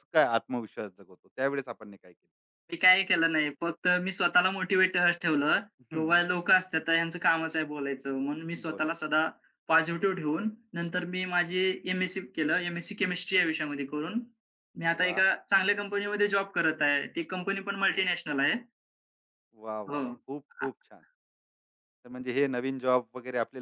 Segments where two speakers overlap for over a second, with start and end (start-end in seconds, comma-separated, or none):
none